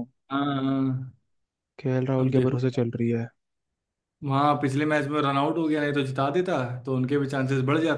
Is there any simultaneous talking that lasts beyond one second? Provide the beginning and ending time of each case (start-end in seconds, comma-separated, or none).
none